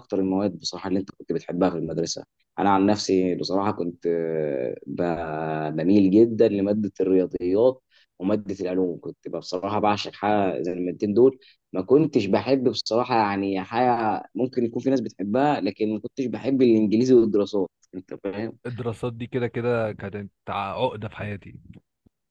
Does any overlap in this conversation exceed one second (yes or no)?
no